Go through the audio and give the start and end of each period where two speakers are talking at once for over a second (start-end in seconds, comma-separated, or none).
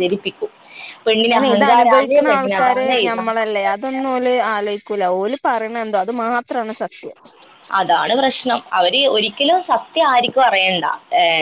1.3-3.7